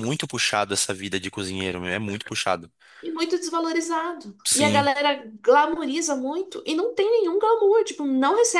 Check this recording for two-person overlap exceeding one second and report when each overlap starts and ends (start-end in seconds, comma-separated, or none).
none